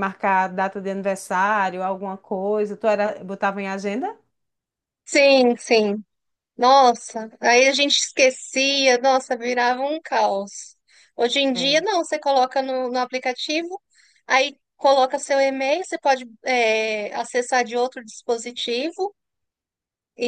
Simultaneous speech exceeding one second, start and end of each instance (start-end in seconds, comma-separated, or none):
none